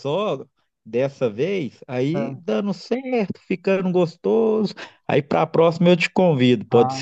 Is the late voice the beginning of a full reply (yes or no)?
yes